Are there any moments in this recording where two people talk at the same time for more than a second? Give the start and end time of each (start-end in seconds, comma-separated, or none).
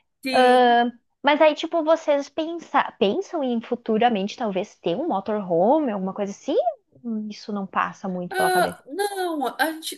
none